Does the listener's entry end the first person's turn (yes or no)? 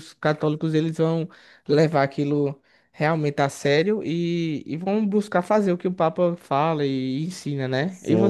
yes